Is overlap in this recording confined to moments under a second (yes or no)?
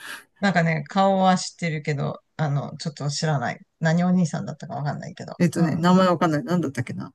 yes